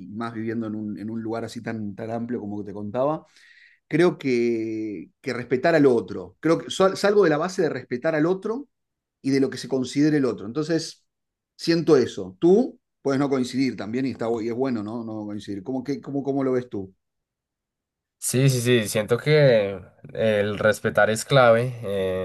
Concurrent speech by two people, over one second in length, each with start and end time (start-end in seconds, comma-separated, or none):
none